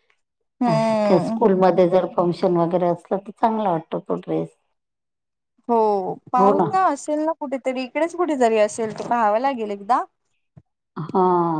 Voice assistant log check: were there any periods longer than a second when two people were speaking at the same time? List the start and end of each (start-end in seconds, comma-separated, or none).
none